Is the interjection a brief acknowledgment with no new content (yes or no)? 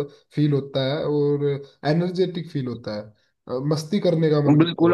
no